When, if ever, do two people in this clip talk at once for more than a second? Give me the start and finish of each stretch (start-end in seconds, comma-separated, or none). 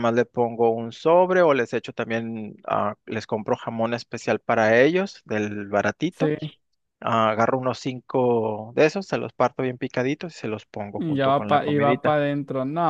11.0-12.2